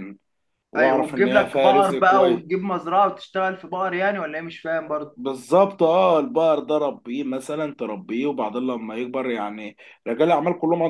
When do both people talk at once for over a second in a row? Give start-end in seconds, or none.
0.8-2.4